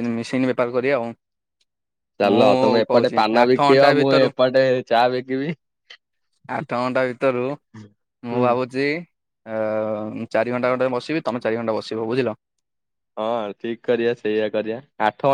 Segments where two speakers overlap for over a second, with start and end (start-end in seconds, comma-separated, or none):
2.2-4.3